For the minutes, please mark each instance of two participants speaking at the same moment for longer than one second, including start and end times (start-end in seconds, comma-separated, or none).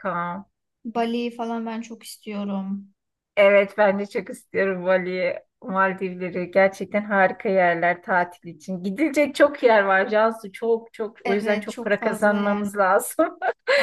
11.2-12.7